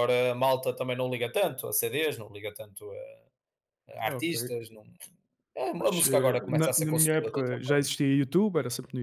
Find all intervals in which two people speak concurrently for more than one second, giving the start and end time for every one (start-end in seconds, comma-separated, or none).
5.8-7.9